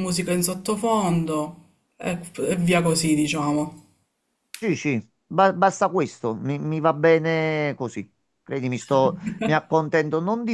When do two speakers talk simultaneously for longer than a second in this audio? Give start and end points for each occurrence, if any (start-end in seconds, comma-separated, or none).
none